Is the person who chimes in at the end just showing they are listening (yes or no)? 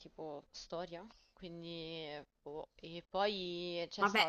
no